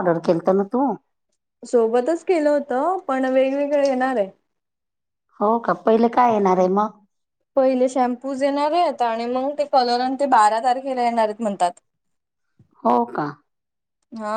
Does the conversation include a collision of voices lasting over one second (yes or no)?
no